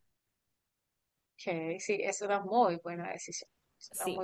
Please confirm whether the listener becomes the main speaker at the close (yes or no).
yes